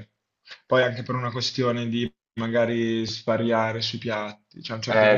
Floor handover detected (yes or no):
no